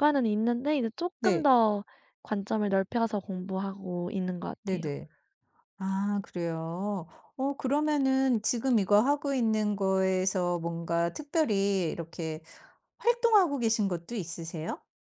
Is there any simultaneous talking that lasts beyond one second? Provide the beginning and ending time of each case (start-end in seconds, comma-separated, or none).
none